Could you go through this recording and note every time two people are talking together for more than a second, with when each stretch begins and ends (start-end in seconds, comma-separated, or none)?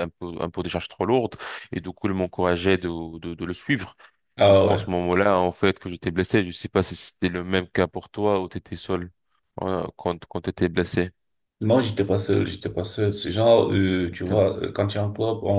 none